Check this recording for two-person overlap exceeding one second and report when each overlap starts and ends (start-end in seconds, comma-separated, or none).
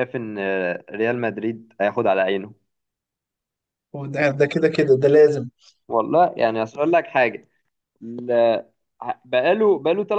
none